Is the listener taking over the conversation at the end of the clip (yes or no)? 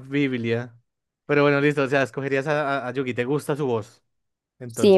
yes